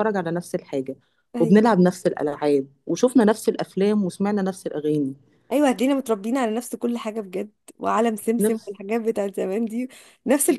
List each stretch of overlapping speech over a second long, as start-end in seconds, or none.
none